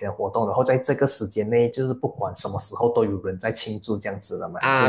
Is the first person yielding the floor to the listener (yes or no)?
yes